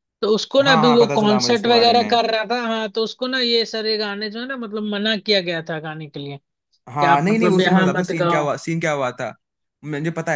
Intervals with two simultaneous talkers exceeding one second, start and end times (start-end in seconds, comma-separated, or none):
0.7-2.2, 6.9-8.5